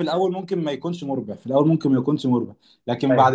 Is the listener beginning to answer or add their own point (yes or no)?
no